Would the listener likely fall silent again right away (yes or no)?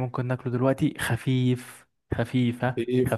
no